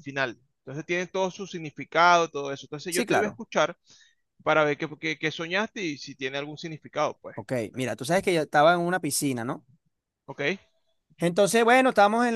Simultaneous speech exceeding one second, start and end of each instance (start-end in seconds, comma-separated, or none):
none